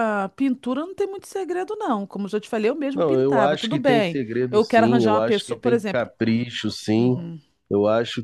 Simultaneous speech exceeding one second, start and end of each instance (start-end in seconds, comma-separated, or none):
2.9-6.1